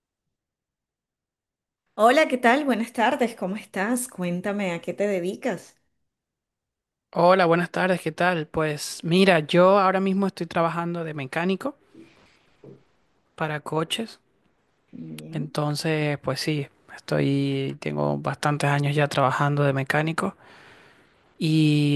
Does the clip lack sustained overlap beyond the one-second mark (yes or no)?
yes